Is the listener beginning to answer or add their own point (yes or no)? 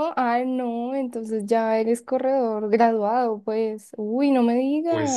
yes